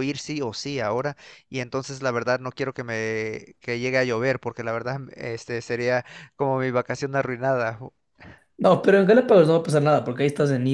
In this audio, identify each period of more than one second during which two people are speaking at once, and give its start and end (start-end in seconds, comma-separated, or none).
none